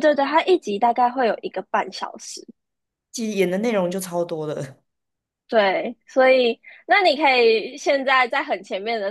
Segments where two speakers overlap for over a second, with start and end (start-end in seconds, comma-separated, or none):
none